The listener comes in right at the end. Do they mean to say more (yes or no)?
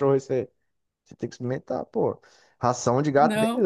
no